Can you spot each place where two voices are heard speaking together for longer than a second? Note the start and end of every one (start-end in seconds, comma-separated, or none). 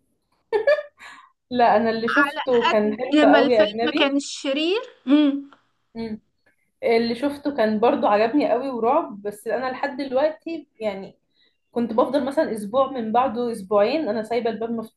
2.7-4.2